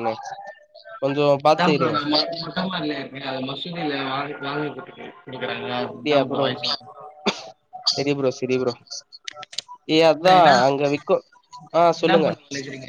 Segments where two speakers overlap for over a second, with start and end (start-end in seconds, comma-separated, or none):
none